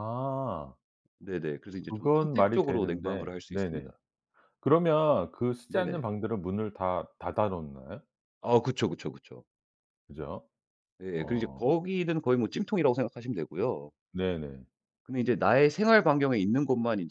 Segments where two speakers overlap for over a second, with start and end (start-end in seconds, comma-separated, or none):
1.9-3.9